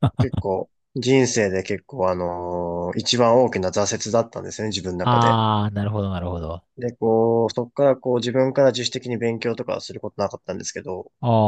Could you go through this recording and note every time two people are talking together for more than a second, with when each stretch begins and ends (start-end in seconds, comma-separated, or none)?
none